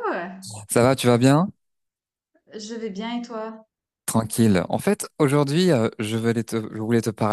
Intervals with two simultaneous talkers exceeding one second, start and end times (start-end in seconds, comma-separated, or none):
none